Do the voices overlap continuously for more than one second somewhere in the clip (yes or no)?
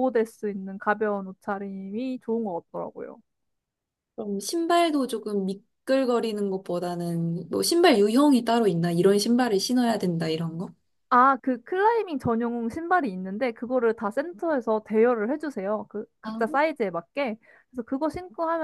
no